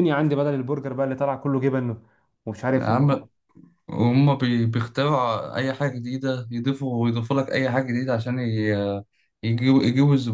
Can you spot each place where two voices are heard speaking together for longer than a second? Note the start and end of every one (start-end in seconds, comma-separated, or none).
none